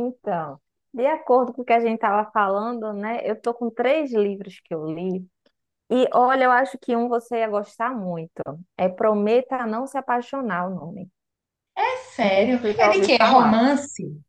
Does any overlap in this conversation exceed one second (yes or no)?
yes